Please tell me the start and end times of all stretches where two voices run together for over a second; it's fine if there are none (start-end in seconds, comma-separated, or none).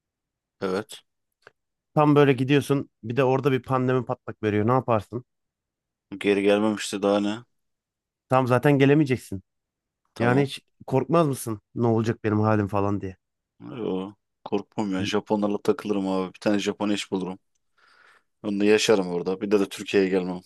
none